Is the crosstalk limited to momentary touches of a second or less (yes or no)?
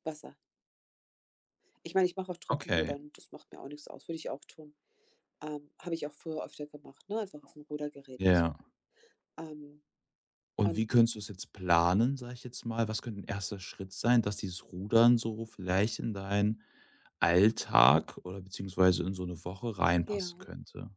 yes